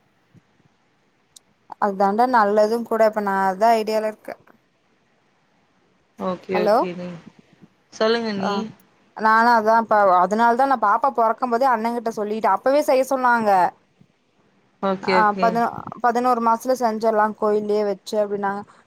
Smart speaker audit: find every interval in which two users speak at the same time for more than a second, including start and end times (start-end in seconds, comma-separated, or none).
none